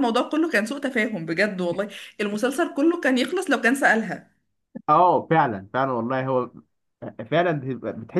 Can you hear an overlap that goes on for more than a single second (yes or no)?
no